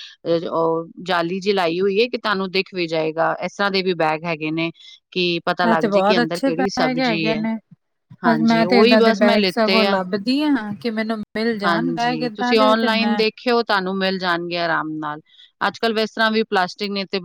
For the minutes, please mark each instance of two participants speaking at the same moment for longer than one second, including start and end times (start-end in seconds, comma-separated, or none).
5.5-7.4, 8.3-10.0, 11.6-13.2